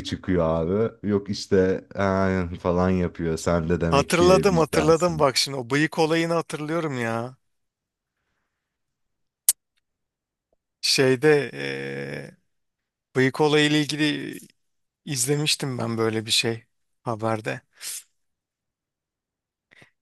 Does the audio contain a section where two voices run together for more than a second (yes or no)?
yes